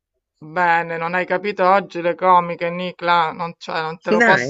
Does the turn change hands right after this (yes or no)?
no